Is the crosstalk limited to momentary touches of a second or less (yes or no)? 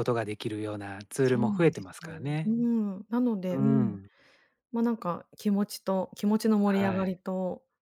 no